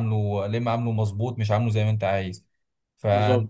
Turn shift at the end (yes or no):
no